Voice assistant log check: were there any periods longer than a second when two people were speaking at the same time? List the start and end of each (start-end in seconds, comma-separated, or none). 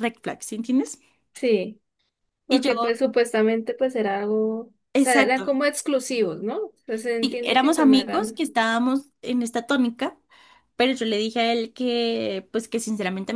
7.2-8.4